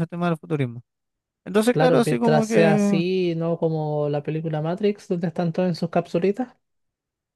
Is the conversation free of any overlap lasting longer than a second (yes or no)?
no